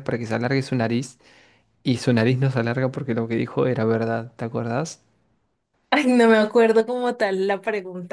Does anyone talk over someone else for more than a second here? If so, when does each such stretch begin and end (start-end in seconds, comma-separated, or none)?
none